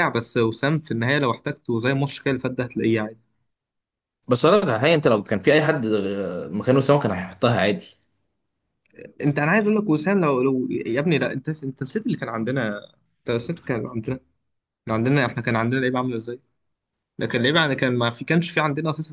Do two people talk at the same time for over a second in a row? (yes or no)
no